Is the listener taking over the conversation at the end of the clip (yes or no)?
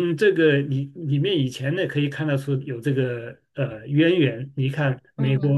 no